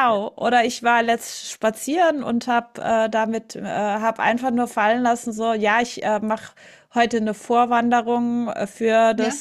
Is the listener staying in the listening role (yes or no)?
yes